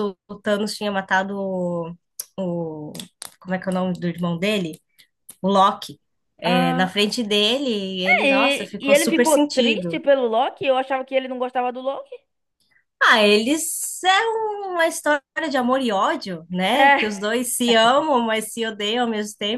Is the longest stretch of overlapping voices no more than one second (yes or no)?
no